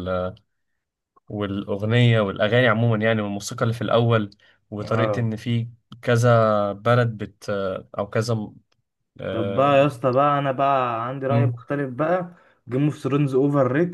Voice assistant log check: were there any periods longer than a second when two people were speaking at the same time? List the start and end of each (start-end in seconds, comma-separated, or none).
none